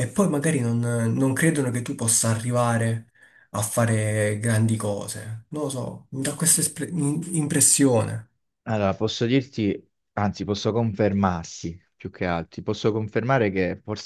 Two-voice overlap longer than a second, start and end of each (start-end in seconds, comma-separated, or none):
none